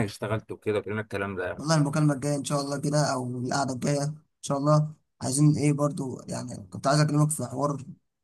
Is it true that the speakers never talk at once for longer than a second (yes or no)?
yes